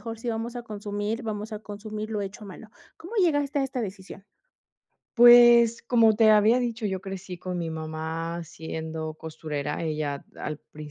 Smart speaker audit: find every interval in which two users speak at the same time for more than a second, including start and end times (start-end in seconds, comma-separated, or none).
none